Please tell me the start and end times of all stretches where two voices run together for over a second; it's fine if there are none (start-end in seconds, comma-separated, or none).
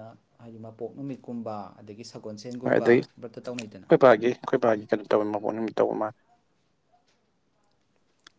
2.6-3.9